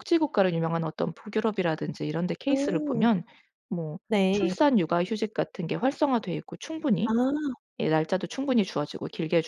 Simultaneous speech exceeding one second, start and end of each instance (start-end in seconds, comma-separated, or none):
none